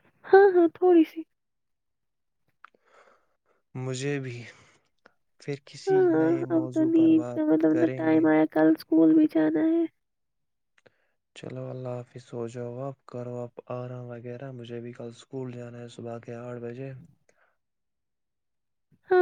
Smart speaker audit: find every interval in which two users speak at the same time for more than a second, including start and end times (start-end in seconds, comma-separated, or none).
5.9-8.2